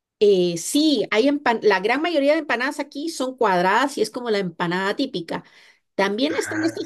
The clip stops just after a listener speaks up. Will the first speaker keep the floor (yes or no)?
yes